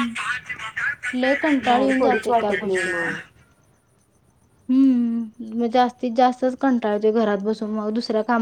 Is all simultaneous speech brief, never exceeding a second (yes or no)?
no